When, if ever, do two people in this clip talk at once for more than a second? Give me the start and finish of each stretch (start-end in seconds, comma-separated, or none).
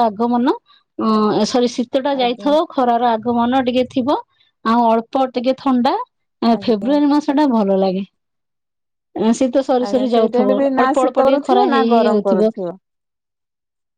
9.9-12.5